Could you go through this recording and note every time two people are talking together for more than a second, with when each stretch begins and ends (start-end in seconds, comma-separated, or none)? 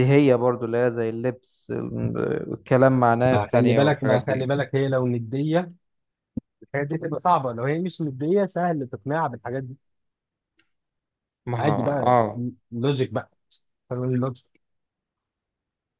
3.3-4.5